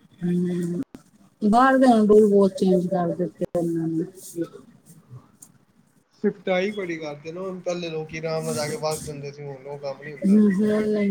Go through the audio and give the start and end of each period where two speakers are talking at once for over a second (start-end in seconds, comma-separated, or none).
none